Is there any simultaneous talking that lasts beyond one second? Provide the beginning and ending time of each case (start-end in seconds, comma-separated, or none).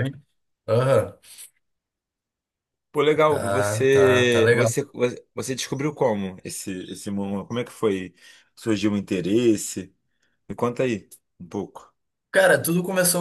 3.3-4.7